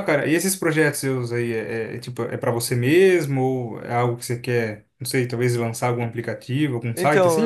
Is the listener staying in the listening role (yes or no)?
no